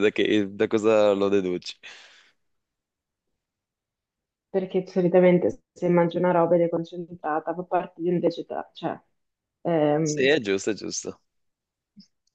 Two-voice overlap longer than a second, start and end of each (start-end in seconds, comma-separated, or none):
none